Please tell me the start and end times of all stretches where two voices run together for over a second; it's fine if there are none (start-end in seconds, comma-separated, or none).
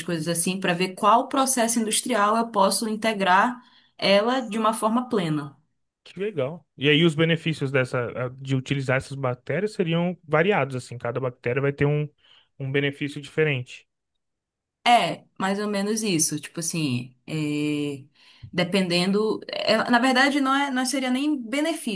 none